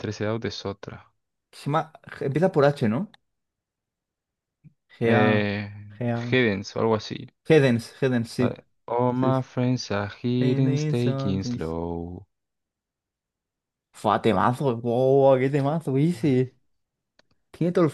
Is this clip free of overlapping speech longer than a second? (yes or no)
no